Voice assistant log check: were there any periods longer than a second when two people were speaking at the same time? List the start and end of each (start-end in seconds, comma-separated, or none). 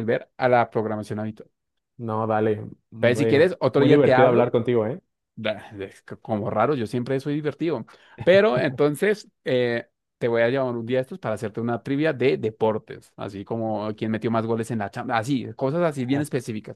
3.0-4.5